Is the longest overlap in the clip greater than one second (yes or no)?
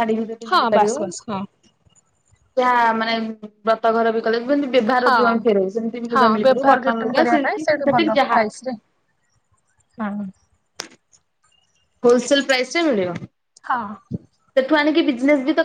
yes